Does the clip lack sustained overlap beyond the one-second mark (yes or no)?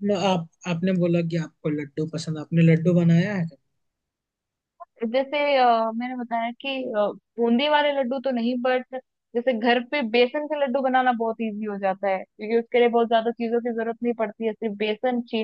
yes